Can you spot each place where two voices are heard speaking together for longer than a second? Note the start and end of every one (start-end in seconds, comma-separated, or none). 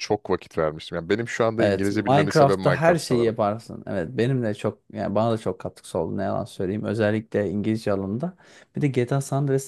1.6-3.4